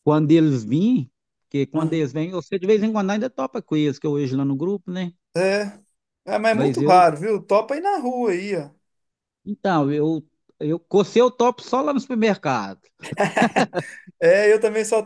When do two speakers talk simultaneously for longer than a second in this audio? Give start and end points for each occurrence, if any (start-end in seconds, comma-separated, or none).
none